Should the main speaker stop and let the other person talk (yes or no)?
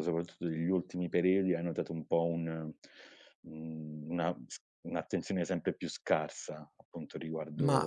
yes